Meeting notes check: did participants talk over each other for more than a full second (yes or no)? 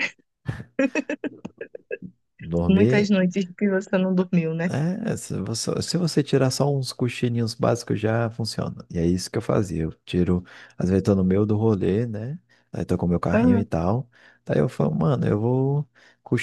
no